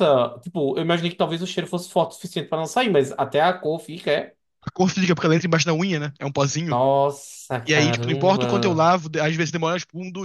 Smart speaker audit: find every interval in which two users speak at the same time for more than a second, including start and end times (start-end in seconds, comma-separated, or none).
7.7-8.9